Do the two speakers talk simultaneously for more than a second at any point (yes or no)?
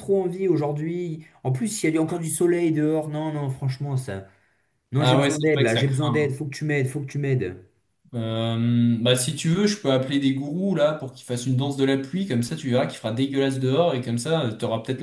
yes